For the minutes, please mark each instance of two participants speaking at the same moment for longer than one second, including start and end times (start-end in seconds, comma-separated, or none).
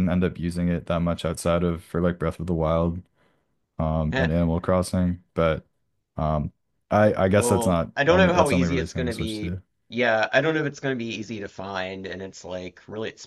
7.4-9.6